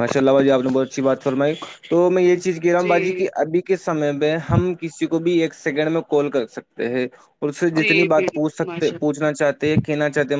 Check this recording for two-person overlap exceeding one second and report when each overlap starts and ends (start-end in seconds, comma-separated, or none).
7.8-9.2